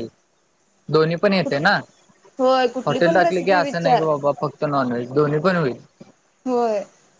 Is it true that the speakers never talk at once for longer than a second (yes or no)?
no